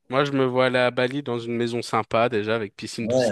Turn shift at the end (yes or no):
no